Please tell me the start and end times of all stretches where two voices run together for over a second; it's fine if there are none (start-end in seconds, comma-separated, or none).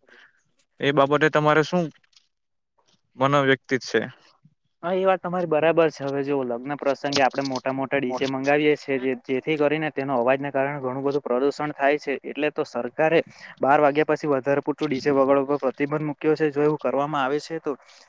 none